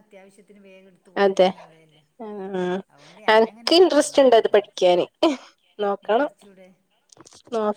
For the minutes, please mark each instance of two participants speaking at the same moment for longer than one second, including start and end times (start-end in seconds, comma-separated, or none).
3.3-4.7